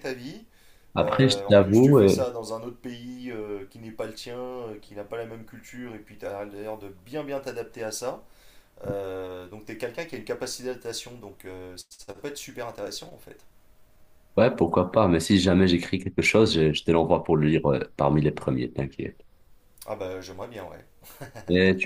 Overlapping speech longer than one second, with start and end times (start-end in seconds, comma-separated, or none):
1.0-2.3